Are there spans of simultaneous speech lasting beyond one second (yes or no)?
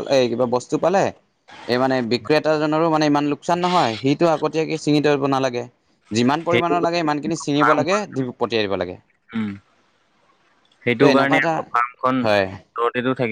no